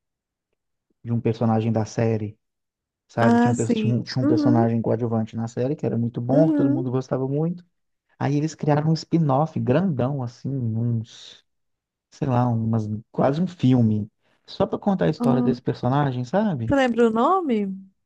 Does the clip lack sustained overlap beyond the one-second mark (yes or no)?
no